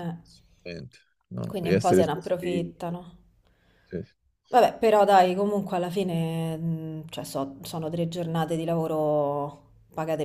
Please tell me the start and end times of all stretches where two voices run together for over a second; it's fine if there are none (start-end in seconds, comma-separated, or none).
1.5-2.7